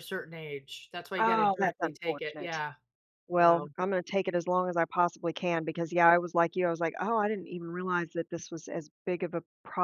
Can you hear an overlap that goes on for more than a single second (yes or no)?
yes